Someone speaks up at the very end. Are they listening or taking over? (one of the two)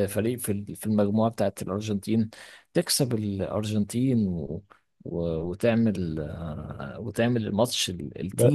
taking over